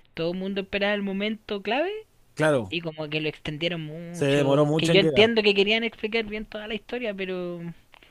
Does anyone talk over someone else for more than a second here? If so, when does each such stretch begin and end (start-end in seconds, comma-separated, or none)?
4.1-5.3